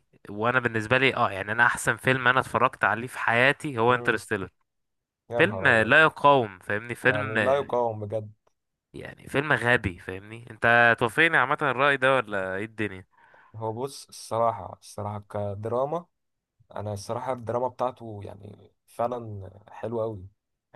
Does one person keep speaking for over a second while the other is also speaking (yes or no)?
no